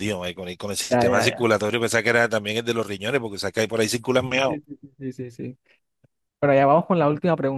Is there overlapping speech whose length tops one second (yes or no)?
no